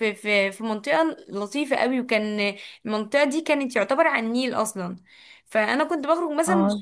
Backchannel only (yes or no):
yes